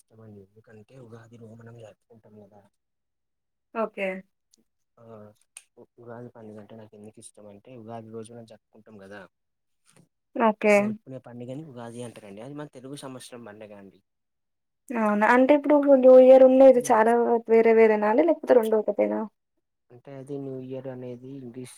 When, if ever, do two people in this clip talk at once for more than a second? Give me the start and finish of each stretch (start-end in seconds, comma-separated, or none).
none